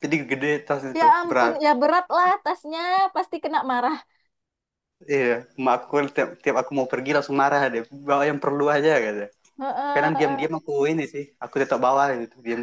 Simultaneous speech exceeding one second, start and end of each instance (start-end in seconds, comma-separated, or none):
none